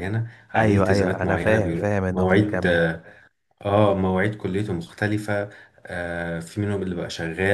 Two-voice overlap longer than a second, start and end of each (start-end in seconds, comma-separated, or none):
0.5-2.8